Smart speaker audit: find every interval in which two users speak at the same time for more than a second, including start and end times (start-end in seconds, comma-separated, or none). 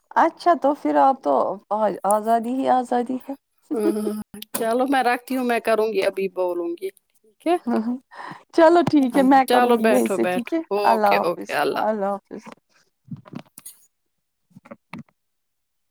9.5-11.5